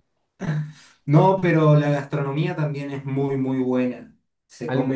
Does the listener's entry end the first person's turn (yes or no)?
no